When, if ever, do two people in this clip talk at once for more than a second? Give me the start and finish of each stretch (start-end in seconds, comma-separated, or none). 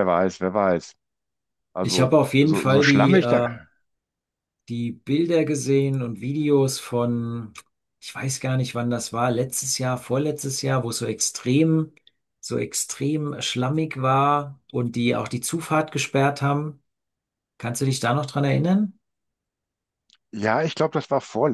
1.8-3.5